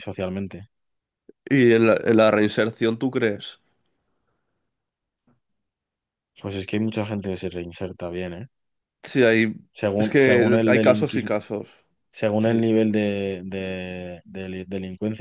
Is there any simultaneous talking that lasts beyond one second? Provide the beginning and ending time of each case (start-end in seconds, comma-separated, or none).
10.0-11.3